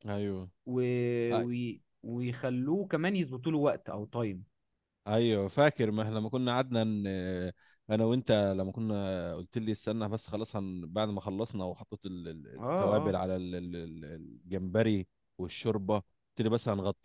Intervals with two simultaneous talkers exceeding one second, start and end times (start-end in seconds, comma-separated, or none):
none